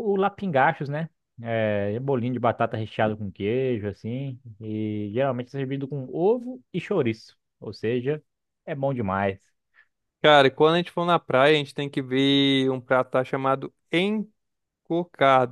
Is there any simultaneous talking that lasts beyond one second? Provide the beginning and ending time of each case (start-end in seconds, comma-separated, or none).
none